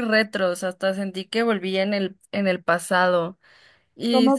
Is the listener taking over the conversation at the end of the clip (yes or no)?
no